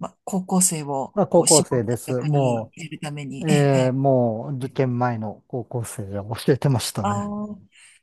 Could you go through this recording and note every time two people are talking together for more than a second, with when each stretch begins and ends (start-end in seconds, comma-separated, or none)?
1.1-2.7